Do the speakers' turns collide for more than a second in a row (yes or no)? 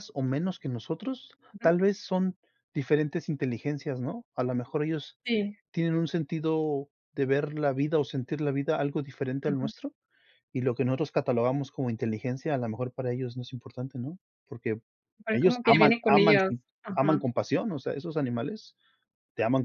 yes